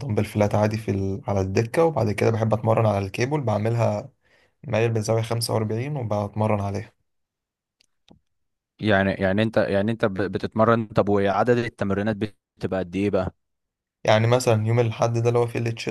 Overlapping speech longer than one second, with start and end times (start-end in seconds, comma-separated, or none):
none